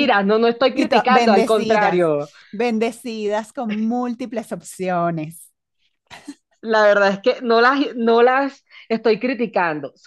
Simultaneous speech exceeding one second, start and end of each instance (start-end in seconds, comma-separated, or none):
0.7-2.1